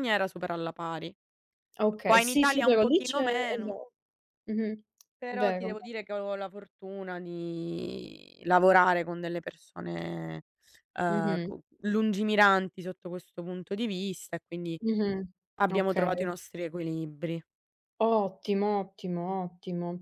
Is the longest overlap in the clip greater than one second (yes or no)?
yes